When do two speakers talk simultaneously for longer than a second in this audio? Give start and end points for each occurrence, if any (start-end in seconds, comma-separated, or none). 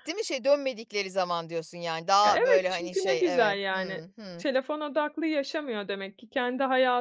2.2-4.5